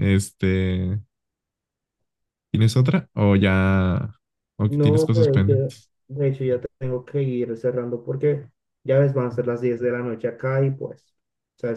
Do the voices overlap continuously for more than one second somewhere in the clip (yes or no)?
yes